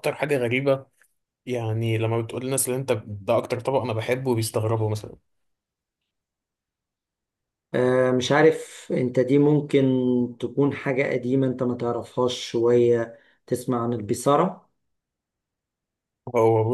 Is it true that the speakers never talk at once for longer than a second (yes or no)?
yes